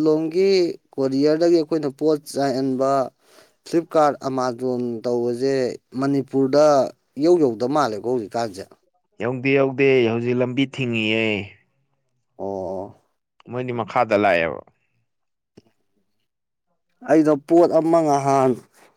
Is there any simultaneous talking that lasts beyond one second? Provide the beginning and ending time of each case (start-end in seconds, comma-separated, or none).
none